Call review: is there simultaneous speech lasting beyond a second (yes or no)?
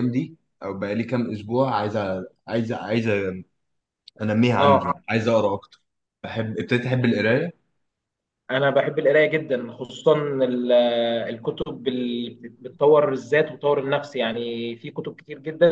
no